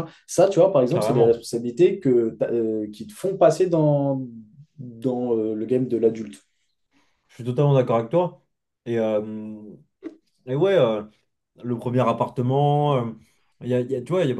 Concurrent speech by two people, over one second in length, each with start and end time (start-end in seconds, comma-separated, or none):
none